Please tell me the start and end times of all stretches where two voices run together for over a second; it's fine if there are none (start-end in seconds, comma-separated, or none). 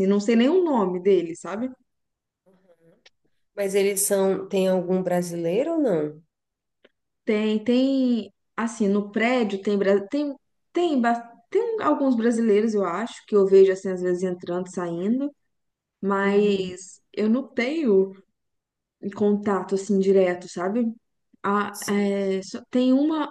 none